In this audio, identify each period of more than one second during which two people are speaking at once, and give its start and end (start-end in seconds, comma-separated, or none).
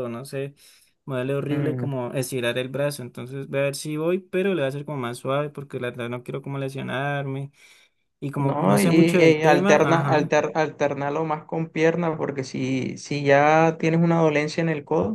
8.4-10.4